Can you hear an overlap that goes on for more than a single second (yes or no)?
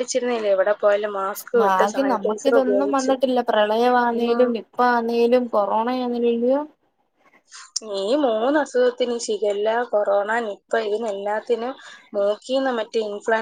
yes